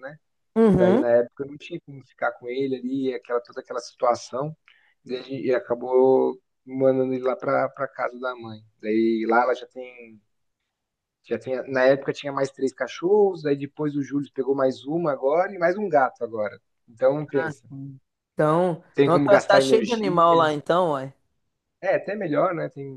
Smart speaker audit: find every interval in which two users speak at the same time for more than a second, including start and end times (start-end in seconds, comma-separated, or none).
18.9-20.5